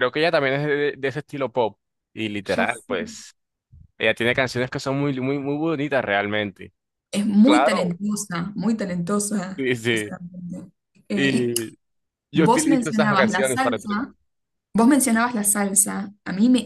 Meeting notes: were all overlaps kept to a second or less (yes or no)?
no